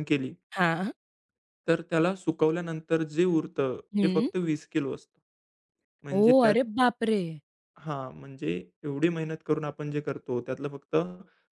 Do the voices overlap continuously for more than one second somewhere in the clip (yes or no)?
no